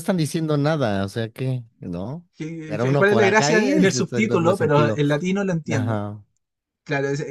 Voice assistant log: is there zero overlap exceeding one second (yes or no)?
no